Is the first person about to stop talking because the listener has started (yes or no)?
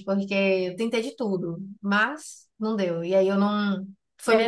yes